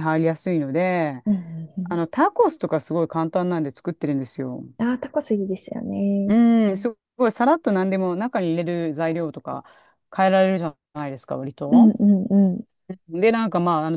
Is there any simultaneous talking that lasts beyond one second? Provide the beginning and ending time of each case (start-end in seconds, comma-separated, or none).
none